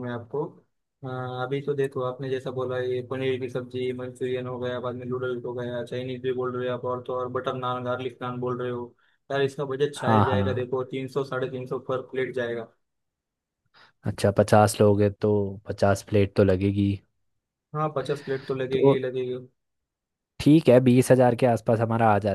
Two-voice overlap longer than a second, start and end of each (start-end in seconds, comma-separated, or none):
none